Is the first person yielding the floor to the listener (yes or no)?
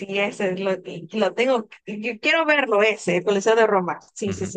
yes